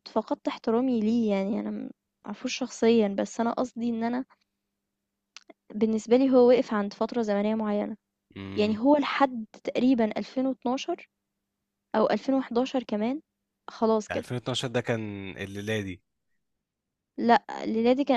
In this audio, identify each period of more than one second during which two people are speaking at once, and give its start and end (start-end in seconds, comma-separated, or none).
none